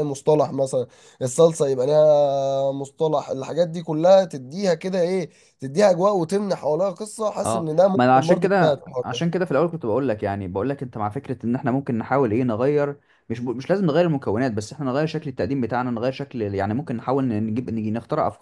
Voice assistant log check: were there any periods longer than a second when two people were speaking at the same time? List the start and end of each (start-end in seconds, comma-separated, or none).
7.4-9.2